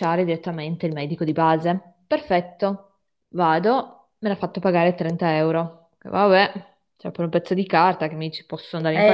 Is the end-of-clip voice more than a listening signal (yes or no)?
yes